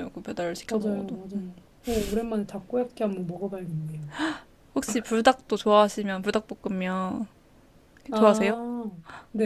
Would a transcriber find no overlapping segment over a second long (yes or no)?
yes